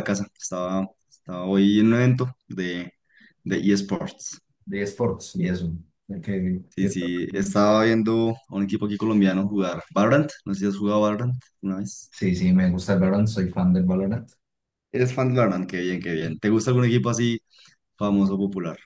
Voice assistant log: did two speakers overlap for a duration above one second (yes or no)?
no